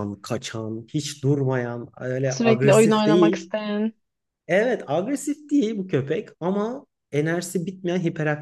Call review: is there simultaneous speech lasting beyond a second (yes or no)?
yes